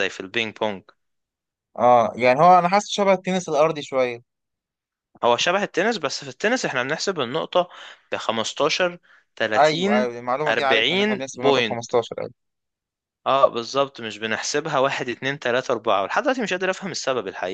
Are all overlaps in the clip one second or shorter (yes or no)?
no